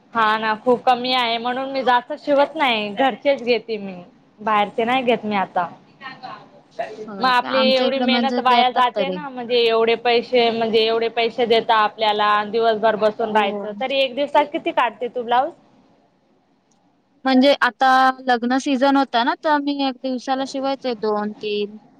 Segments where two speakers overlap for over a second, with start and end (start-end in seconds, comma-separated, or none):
7.2-9.2